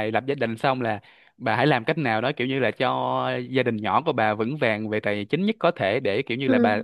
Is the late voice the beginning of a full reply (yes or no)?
no